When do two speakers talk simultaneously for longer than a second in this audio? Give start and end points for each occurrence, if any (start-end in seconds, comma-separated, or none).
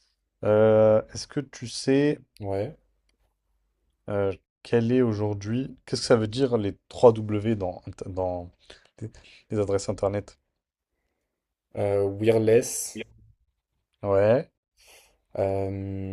none